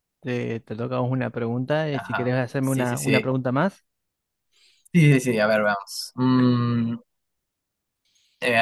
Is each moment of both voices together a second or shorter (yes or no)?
no